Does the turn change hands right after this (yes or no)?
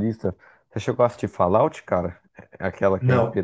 no